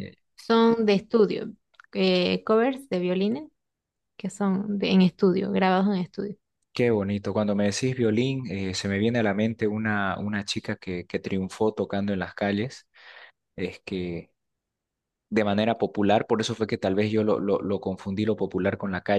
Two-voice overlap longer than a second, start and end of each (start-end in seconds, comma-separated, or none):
none